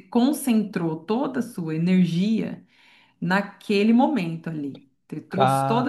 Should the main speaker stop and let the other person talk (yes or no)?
no